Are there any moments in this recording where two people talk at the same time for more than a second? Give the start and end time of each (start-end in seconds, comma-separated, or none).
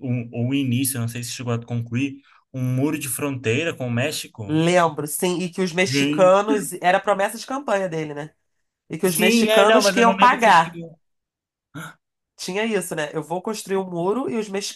9.0-10.8